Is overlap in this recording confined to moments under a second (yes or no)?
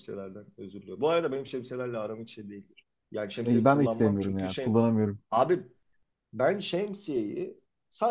no